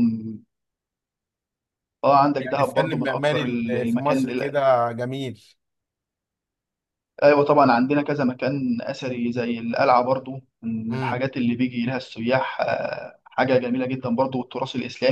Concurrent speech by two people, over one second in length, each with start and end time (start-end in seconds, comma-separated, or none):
2.4-4.2